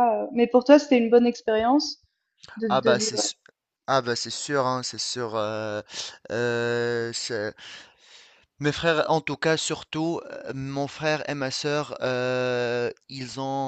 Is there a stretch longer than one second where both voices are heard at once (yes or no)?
no